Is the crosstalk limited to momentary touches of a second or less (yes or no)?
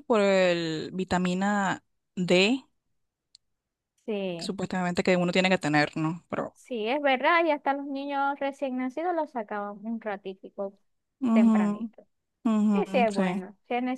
yes